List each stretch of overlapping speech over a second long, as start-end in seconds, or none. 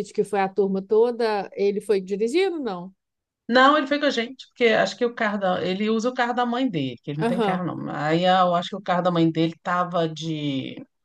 none